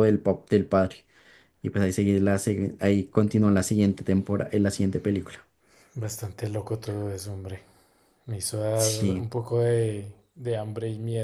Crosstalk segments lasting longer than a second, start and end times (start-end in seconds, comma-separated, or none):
none